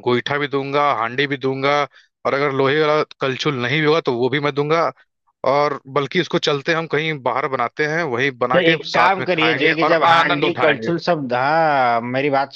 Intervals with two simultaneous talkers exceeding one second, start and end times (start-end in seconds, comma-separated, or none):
8.5-10.9